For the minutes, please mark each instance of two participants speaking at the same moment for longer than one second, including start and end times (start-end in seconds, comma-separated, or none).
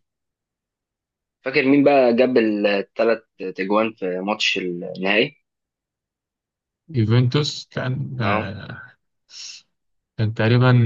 none